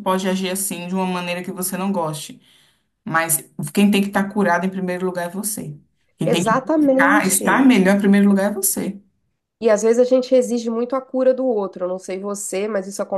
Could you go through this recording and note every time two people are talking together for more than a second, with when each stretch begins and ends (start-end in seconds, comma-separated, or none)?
6.2-7.7